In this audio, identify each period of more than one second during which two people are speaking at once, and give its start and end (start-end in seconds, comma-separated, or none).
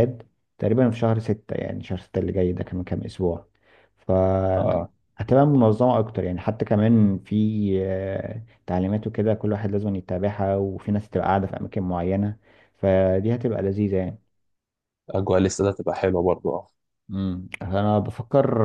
none